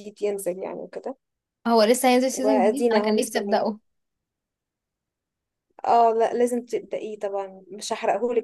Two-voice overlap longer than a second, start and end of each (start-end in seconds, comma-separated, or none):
2.3-3.7